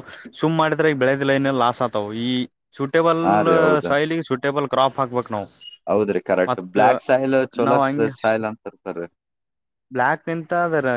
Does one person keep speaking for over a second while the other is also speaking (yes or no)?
no